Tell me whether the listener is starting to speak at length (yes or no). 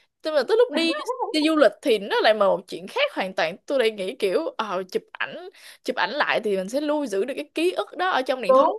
no